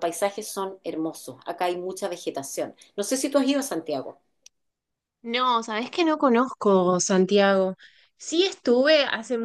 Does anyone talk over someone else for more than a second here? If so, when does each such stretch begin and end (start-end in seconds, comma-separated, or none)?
none